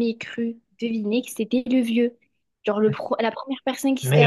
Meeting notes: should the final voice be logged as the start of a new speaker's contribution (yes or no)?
yes